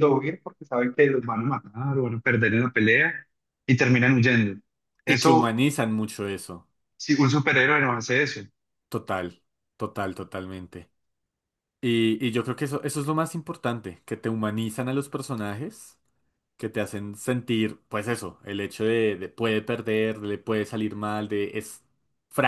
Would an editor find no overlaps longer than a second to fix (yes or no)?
yes